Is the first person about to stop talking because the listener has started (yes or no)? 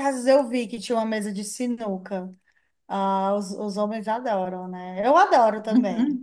yes